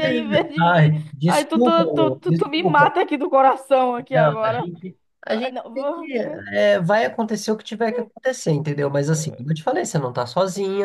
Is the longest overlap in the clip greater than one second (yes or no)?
yes